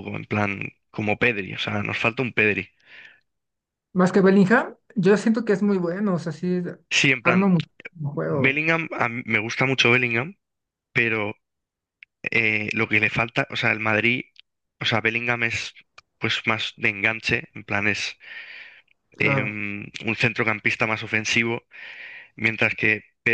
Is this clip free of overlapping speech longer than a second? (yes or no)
yes